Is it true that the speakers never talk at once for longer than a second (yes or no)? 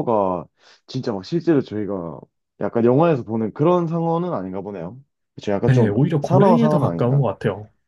no